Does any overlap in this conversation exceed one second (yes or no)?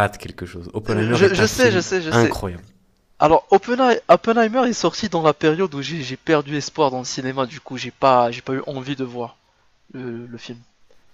yes